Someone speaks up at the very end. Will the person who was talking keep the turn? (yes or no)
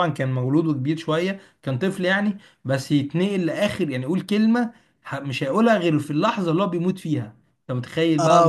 no